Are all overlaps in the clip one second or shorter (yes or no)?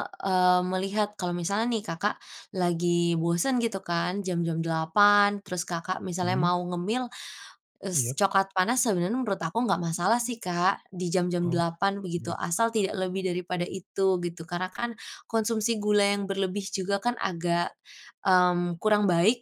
no